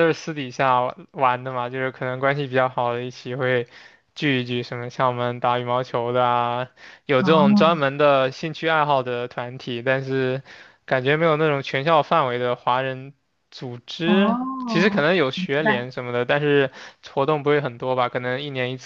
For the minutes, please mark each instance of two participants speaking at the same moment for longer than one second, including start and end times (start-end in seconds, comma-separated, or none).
14.0-15.9